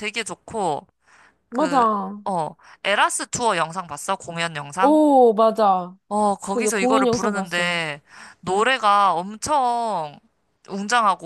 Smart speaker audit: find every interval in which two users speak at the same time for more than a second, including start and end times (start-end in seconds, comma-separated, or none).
6.5-7.8